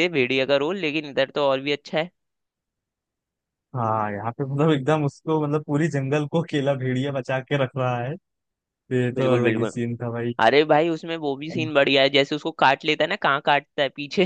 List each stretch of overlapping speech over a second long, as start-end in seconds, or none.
none